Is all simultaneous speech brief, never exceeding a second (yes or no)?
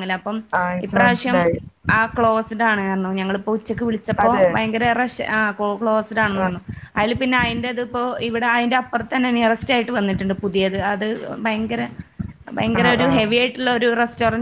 yes